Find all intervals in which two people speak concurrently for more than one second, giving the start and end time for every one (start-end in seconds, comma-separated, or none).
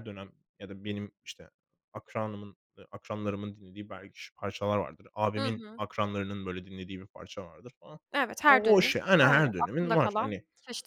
8.5-10.3